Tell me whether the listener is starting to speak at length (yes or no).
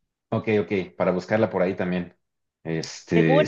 yes